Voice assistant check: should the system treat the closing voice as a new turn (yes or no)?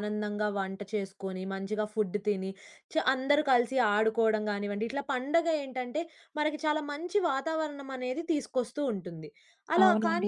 no